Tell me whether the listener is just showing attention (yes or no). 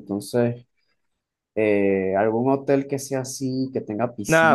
no